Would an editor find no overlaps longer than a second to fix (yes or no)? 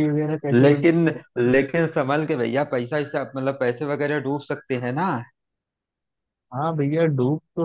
yes